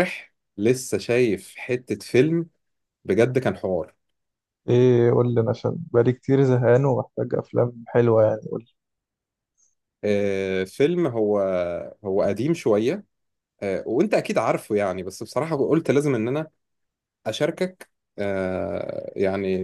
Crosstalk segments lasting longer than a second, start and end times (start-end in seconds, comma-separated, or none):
none